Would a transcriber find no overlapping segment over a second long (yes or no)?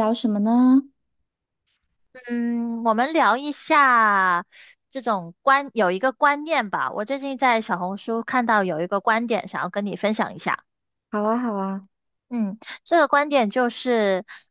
yes